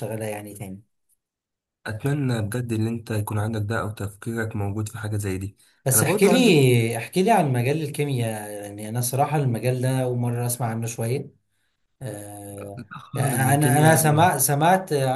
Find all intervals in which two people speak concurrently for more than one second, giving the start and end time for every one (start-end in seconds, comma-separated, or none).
12.6-14.3